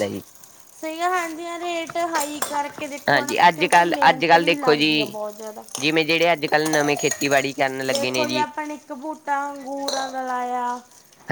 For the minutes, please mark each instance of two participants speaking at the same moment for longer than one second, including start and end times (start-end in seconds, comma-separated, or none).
3.1-5.2